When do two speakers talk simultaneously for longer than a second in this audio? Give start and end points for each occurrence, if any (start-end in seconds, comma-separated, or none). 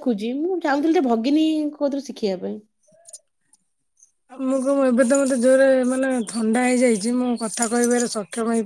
none